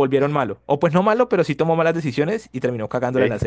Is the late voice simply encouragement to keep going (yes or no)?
no